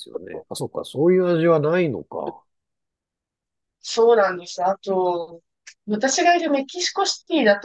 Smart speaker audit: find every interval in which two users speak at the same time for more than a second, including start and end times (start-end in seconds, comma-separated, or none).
none